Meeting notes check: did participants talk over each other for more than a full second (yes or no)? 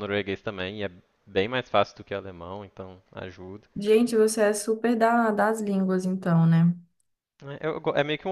no